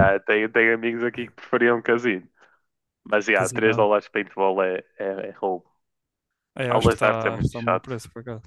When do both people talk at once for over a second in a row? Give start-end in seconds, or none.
6.7-7.9